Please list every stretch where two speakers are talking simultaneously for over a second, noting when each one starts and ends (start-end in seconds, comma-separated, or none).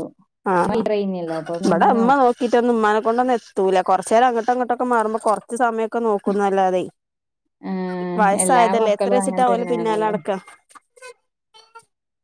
8.2-10.1